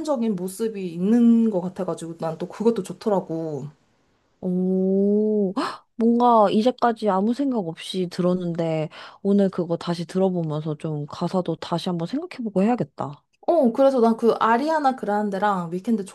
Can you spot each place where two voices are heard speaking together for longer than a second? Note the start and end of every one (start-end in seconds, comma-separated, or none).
none